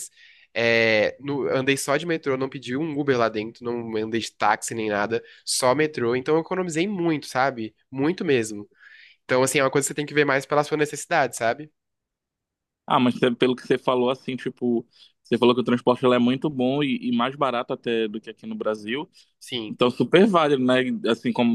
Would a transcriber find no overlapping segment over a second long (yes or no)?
yes